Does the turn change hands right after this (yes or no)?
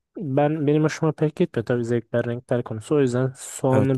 yes